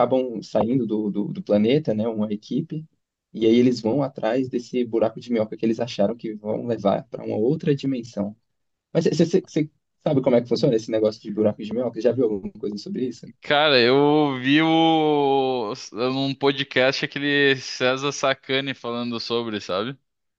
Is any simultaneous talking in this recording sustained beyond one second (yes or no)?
no